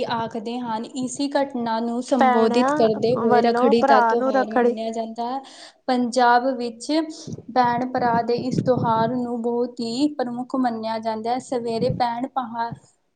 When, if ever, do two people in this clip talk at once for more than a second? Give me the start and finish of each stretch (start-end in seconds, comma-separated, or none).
2.2-4.7